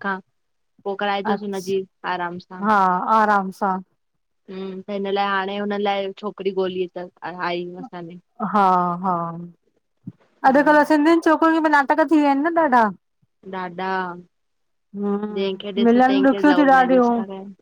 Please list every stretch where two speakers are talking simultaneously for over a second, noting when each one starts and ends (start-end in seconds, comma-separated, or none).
15.4-17.1